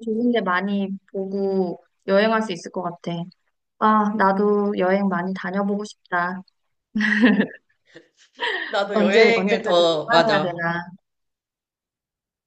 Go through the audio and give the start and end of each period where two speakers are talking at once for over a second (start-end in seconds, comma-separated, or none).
8.9-10.6